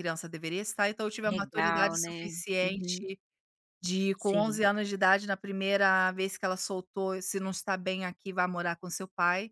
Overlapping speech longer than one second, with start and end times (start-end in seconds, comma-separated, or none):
1.2-3.1